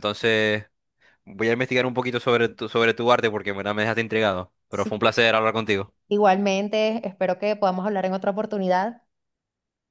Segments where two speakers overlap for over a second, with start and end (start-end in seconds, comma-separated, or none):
none